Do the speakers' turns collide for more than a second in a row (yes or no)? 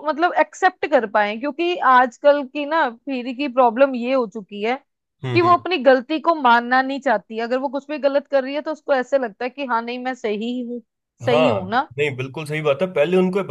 no